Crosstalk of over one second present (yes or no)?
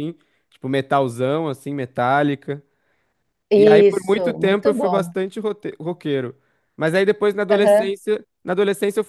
yes